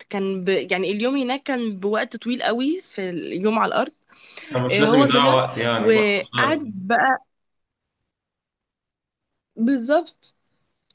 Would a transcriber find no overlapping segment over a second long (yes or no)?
no